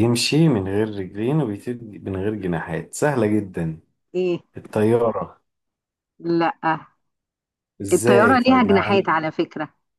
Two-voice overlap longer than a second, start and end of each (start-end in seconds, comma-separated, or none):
7.9-9.1